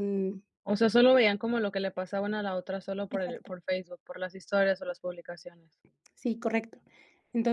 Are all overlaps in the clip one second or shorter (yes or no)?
yes